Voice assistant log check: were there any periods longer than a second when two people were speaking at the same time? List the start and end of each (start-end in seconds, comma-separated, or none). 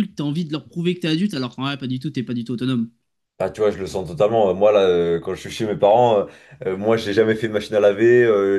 none